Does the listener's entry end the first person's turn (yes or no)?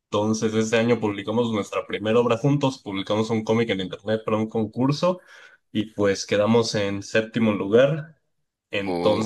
no